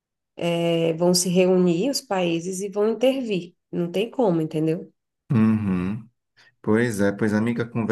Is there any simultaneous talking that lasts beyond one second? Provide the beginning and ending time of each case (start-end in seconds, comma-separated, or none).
none